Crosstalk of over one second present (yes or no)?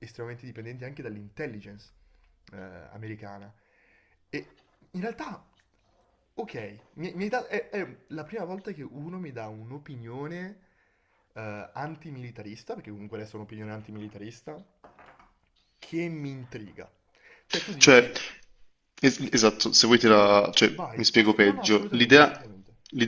yes